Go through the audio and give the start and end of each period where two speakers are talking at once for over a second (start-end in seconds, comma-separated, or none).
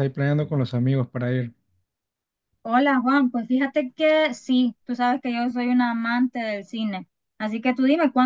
none